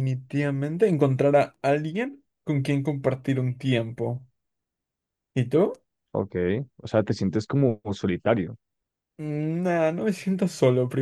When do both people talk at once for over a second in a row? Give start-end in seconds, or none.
none